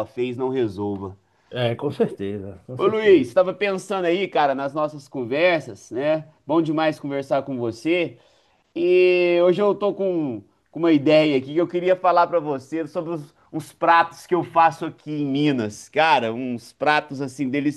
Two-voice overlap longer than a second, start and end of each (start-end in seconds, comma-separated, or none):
none